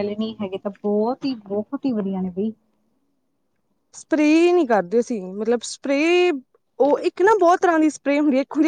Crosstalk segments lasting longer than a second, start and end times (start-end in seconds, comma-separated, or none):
none